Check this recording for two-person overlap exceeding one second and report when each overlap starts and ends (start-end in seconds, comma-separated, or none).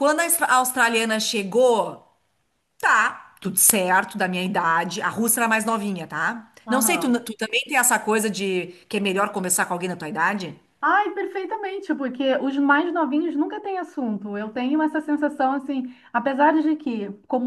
none